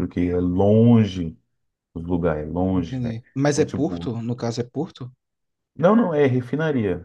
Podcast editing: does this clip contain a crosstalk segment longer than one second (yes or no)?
yes